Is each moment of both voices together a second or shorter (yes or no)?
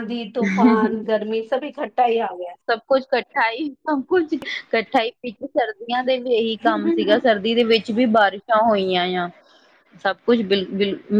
yes